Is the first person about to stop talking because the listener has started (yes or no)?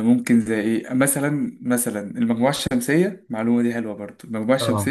no